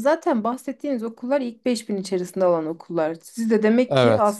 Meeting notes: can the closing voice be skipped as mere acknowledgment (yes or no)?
yes